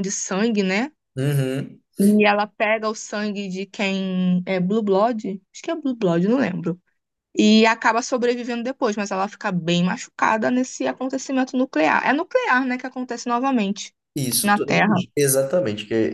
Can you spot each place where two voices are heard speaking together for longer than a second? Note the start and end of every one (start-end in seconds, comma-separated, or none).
none